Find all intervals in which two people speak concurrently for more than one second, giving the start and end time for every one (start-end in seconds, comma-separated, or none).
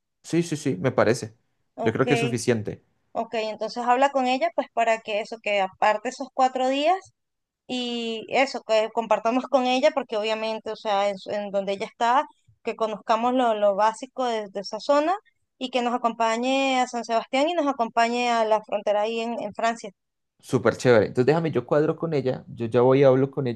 none